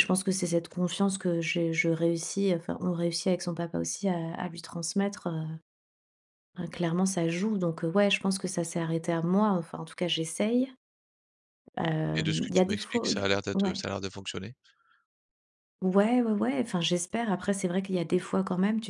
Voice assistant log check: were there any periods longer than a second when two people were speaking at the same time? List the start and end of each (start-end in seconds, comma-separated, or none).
12.2-13.8